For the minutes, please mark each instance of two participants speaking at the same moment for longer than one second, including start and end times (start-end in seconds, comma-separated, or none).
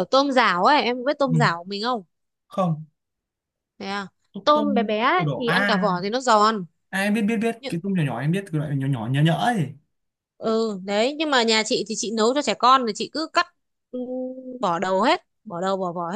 4.4-5.9